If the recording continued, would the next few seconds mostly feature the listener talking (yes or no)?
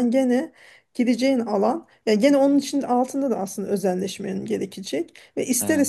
no